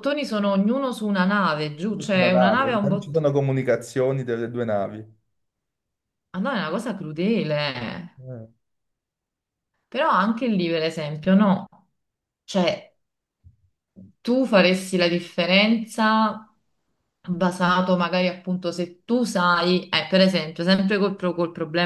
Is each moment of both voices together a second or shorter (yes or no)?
no